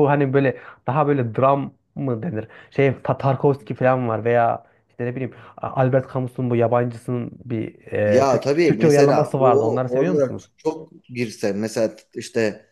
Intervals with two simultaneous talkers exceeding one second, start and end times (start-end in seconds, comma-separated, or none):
8.1-10.5